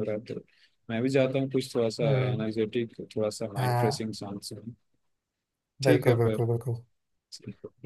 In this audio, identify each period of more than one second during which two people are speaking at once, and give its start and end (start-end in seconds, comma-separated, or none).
none